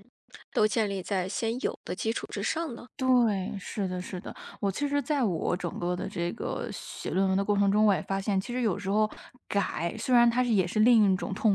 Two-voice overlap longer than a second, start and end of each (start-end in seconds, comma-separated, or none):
none